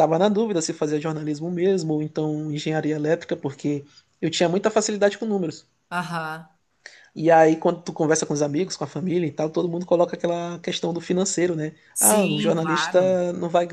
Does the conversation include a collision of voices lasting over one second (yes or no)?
yes